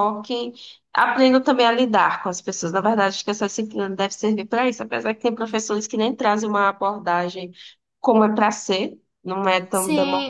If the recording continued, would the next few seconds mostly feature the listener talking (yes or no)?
yes